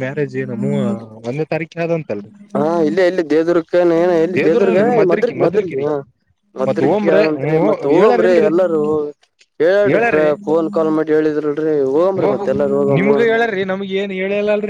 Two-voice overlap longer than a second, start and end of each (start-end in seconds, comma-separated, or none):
4.4-5.8